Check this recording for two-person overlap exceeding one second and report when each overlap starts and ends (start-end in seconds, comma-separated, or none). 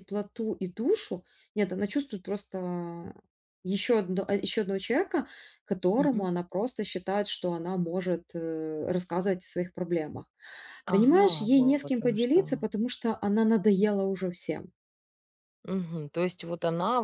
10.9-12.4